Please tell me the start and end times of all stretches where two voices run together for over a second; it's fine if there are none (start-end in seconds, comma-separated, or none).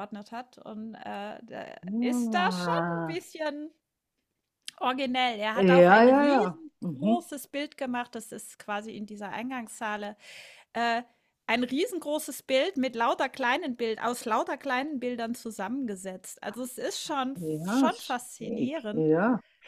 2.0-3.2, 5.5-7.1, 17.3-19.1